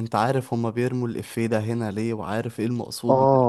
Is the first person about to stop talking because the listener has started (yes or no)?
yes